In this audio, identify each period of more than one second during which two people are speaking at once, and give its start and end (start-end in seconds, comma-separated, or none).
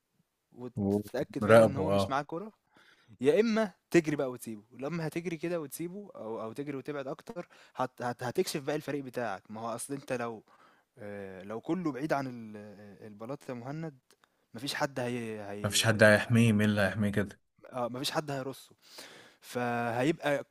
0.8-2.2